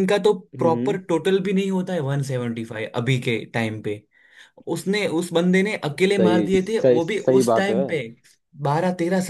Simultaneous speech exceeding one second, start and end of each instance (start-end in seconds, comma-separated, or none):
6.0-7.8